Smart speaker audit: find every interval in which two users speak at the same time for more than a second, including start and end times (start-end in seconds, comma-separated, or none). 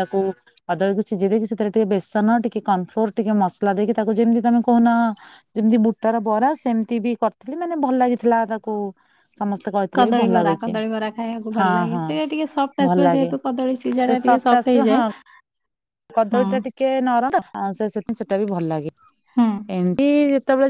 none